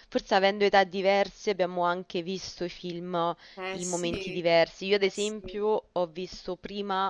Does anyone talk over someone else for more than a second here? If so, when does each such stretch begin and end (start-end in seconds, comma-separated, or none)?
3.7-5.6